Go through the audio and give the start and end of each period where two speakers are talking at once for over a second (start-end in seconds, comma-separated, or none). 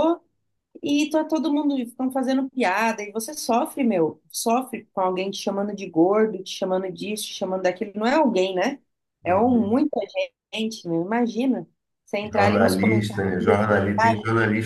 12.3-14.1